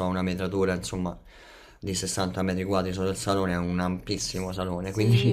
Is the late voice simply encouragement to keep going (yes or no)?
no